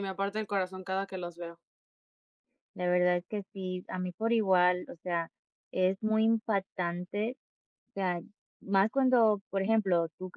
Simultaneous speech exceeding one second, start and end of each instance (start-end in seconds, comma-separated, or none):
none